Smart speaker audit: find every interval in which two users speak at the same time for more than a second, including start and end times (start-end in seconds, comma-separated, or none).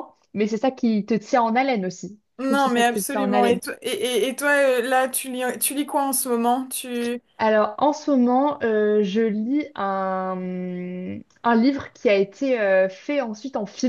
2.4-3.6